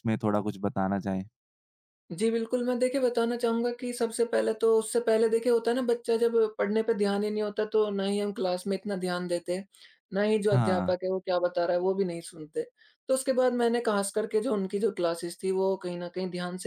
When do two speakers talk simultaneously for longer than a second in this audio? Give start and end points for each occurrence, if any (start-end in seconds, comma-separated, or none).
none